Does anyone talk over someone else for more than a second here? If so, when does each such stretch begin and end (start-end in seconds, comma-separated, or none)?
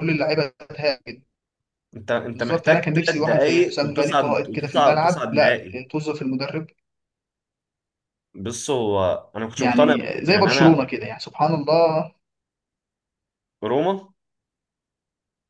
2.3-5.5, 9.6-10.9